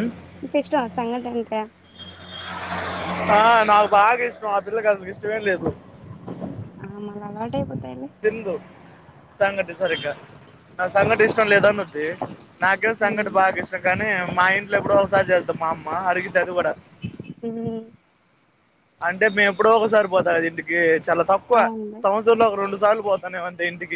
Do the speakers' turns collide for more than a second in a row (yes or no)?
no